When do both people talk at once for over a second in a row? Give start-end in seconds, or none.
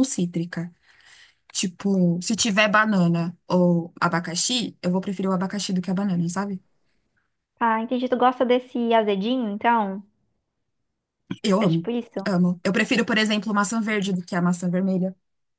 none